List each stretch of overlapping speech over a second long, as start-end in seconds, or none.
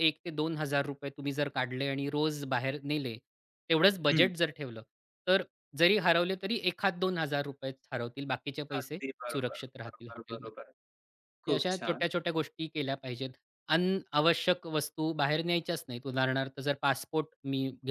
8.8-10.5